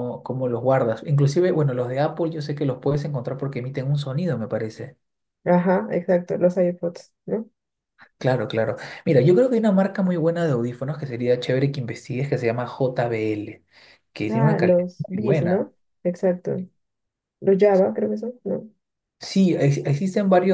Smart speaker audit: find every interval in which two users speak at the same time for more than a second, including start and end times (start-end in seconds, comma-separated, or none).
14.3-15.7